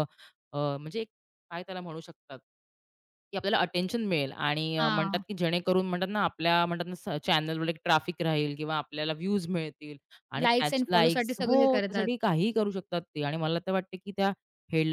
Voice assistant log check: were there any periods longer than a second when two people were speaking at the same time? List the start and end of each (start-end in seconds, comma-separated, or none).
10.4-12.1